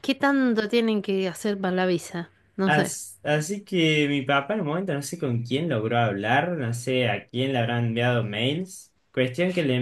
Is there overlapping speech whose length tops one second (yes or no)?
no